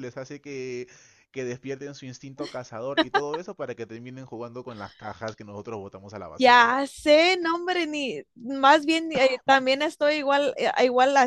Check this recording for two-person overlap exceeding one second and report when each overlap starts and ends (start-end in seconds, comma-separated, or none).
none